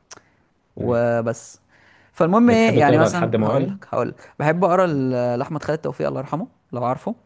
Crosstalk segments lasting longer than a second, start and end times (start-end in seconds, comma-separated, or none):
2.5-3.8